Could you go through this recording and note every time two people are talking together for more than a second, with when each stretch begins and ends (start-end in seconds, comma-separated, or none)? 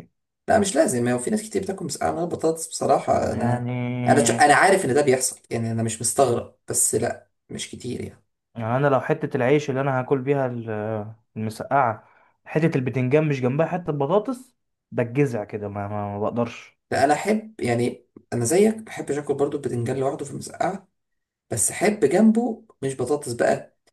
none